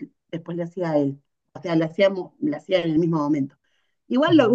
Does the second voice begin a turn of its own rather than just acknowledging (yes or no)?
no